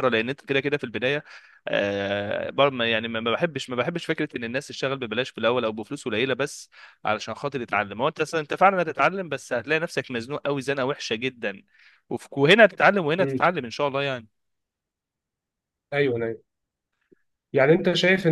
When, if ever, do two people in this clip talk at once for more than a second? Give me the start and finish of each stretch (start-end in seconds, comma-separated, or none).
none